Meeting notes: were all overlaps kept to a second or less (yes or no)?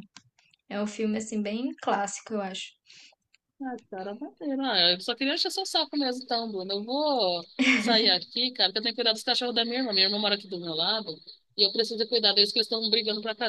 yes